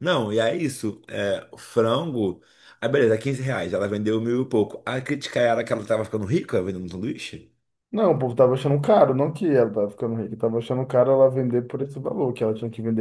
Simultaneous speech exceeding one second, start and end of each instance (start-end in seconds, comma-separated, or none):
none